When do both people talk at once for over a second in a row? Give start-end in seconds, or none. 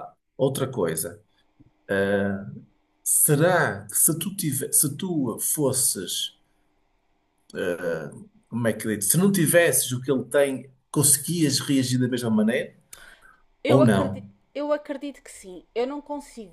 none